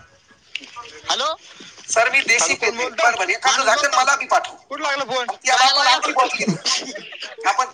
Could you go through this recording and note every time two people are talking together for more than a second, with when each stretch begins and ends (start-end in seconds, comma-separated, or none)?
none